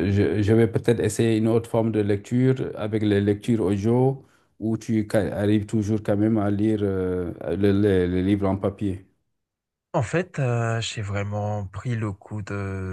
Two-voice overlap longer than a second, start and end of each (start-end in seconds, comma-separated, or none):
none